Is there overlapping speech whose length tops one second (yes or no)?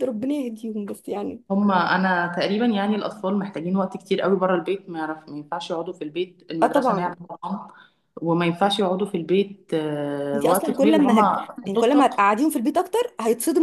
yes